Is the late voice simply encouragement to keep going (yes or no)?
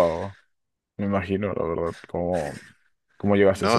no